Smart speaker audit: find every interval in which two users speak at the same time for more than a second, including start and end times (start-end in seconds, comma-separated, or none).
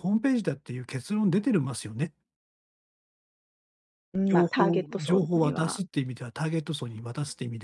4.3-5.8